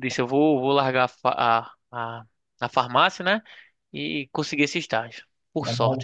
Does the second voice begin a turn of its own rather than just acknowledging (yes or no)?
yes